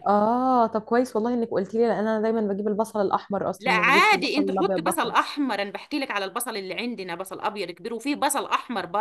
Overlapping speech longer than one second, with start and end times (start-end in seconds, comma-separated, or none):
3.6-5.3